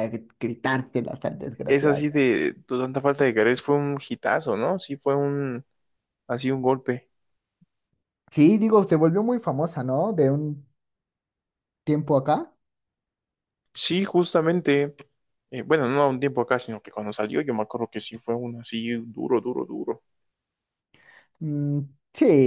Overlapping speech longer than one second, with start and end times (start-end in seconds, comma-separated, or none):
none